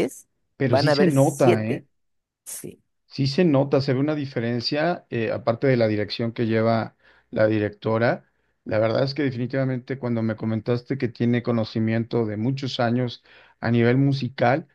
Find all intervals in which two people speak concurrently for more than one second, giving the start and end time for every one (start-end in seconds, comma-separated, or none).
0.6-1.8